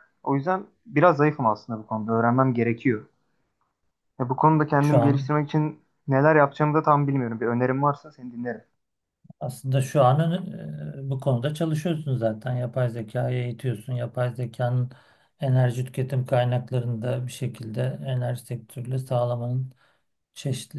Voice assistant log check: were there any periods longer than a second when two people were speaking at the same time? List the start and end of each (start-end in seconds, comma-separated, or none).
none